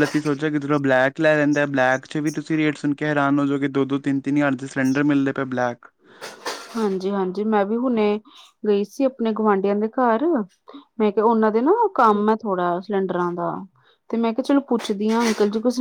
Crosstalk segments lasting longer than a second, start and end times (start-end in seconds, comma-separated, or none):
none